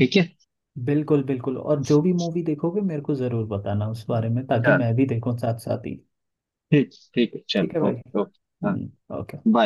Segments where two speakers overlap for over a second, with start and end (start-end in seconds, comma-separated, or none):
none